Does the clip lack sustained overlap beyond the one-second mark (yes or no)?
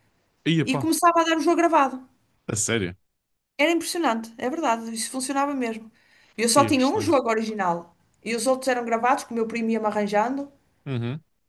yes